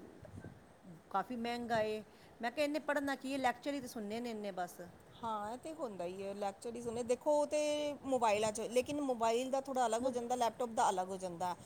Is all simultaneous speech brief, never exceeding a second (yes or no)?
yes